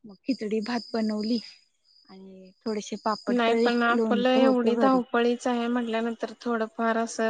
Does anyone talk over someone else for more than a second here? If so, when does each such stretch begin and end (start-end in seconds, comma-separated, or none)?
3.4-5.0